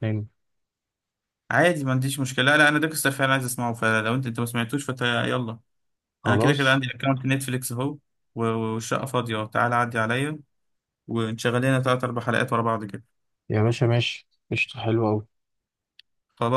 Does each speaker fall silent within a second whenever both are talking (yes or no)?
yes